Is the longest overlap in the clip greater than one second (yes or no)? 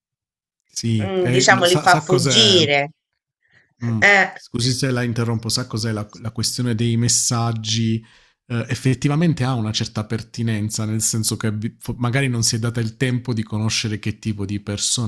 yes